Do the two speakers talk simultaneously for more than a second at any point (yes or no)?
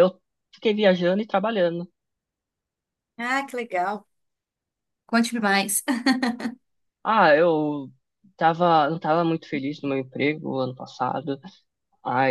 no